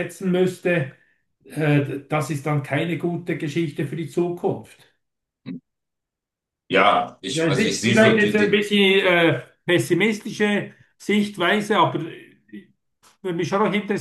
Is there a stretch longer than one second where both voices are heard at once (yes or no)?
yes